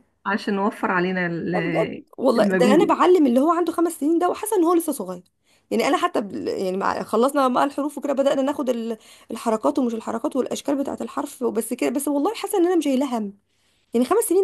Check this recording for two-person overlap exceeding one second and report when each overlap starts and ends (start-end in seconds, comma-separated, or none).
1.5-3.0